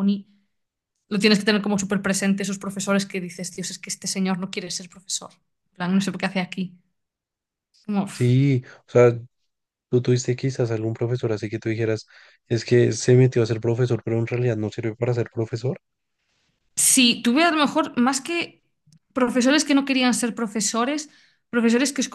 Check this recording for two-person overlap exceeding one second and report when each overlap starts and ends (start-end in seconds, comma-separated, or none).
none